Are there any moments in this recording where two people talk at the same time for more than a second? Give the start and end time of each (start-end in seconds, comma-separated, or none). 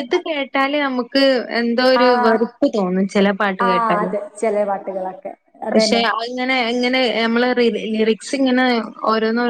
none